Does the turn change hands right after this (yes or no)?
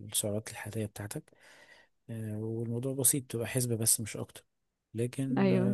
no